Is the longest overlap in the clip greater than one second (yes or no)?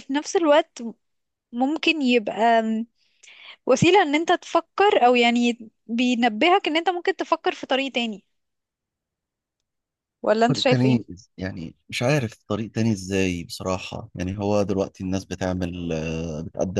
no